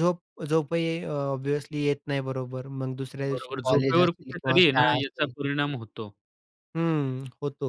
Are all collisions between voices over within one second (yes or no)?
no